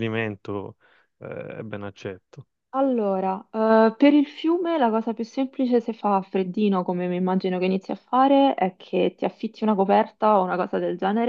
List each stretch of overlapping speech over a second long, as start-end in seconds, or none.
none